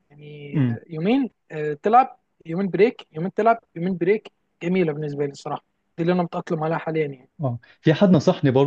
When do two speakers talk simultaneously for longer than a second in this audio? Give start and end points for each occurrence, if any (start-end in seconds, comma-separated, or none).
none